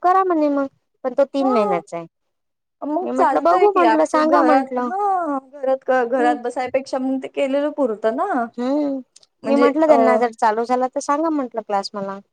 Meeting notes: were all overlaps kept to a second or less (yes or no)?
no